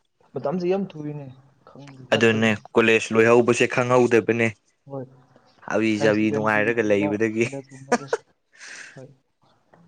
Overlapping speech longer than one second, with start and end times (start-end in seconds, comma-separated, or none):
6.0-7.4